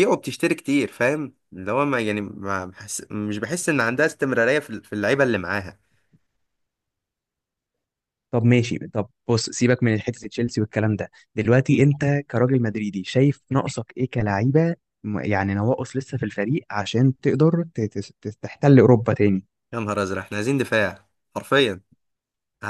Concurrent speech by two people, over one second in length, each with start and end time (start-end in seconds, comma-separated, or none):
none